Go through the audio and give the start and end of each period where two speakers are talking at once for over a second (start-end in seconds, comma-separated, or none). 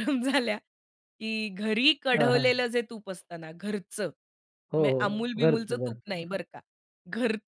4.8-6.4